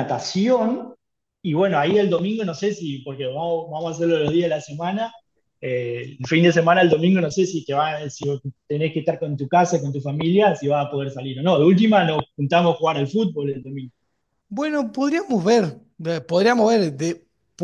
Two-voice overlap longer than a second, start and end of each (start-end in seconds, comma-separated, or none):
none